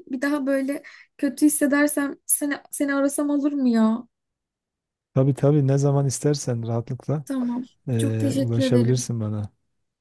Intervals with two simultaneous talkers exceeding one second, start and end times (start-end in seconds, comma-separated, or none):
7.9-9.2